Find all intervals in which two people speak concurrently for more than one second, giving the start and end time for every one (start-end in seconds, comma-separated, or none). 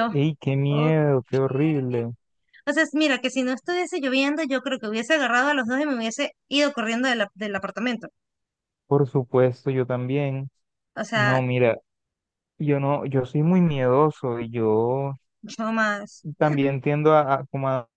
none